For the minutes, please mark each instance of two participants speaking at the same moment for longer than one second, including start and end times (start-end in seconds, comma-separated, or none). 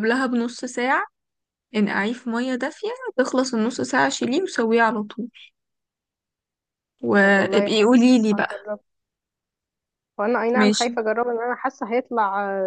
7.2-8.5